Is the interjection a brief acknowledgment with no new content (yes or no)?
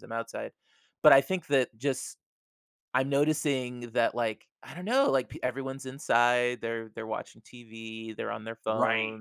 yes